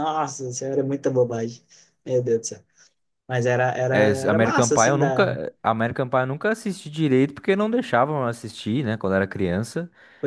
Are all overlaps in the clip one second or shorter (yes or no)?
no